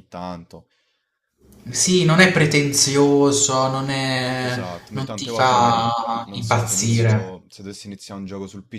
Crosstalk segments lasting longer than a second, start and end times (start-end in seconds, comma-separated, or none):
4.4-7.4